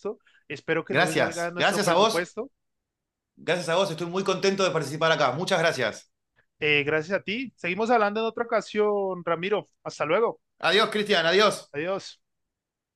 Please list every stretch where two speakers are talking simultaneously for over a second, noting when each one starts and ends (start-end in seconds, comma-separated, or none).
0.9-2.3